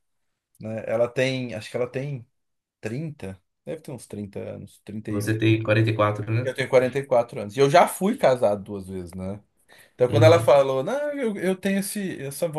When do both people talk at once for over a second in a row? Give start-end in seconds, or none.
none